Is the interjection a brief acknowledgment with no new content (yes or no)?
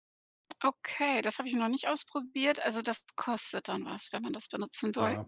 no